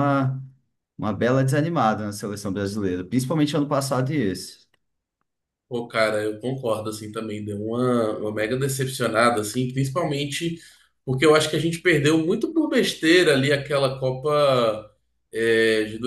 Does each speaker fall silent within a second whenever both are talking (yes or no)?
yes